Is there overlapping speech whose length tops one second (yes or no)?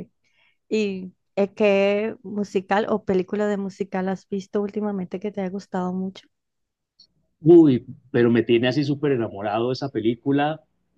no